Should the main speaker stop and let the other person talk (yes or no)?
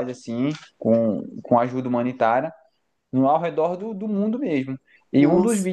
no